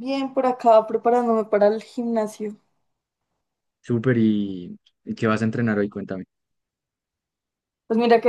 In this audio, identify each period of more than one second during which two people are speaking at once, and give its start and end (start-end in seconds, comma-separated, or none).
none